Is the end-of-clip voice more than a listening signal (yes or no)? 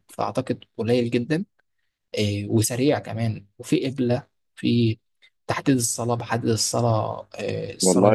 yes